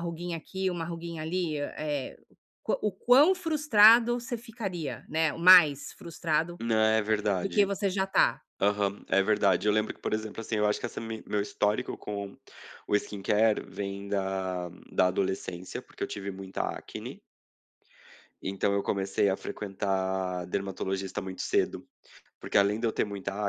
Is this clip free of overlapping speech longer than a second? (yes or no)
yes